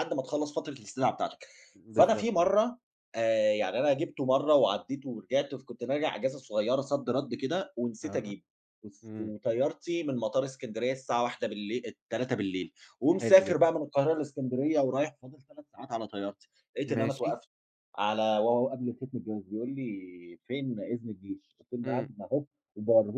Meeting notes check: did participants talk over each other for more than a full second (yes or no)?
no